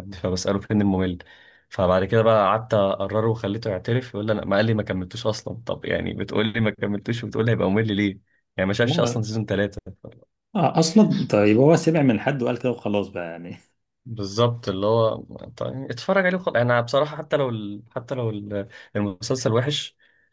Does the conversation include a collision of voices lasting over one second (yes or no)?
no